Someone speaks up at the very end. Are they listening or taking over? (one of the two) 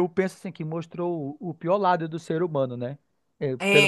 taking over